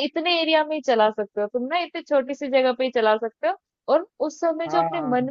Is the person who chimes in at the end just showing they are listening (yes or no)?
yes